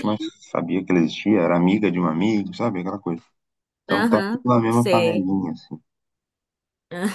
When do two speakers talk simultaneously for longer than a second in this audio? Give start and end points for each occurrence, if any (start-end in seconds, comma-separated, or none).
3.9-5.3